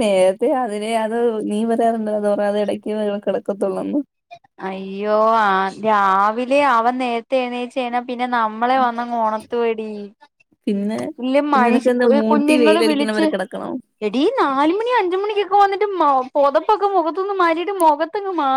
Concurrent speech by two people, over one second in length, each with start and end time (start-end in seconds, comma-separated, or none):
11.5-13.2